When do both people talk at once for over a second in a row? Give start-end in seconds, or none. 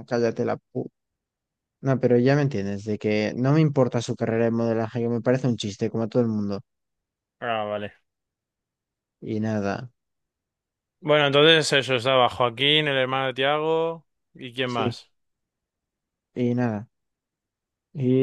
none